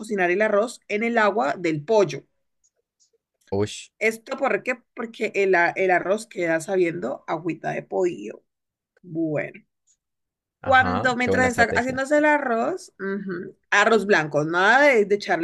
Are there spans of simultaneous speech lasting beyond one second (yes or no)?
yes